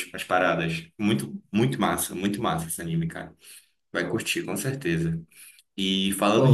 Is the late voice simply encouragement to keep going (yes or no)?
yes